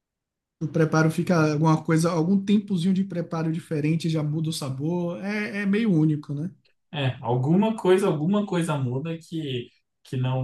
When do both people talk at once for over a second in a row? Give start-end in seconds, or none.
none